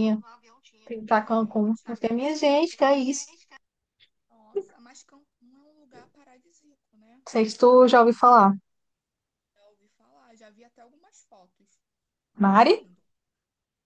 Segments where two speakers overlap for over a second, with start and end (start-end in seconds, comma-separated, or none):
1.2-3.4